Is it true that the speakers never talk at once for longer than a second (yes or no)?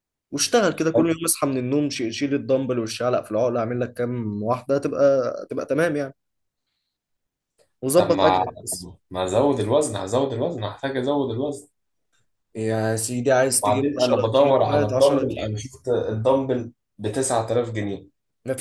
no